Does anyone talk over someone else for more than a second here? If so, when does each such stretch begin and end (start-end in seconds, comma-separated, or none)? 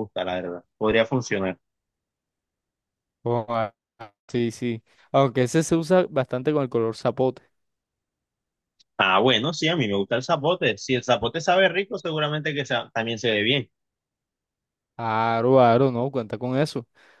none